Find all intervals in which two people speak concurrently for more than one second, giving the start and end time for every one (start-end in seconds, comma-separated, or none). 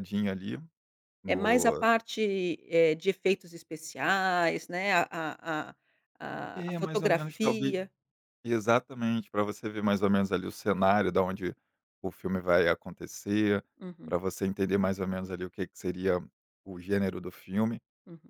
6.5-7.8